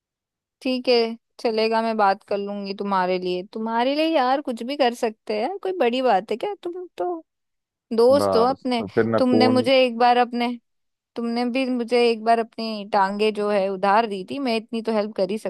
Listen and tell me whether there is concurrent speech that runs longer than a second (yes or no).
yes